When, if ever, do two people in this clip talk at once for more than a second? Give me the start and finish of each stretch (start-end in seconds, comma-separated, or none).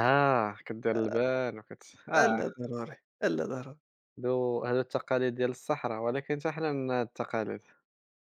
none